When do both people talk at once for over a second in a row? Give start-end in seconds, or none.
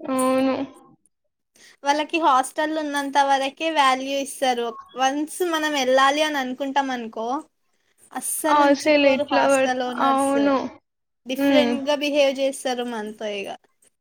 8.6-10.3